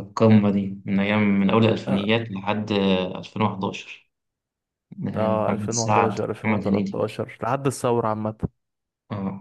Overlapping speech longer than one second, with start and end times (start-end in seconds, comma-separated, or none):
5.2-7.0